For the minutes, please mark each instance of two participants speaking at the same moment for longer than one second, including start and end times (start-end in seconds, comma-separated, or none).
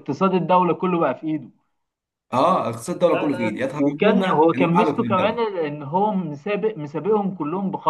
3.1-5.4